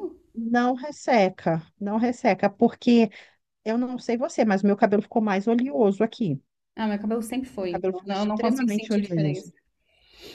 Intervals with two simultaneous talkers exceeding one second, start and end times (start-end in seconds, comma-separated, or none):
7.6-9.5